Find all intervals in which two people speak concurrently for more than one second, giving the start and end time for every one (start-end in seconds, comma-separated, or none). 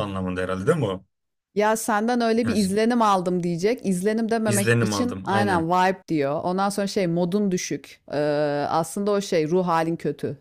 4.5-5.7